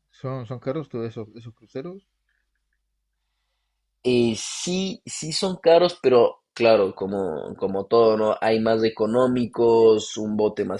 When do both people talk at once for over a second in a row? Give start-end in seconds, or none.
none